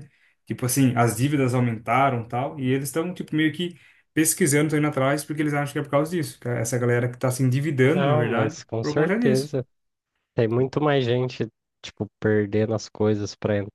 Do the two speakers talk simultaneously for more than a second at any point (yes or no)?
yes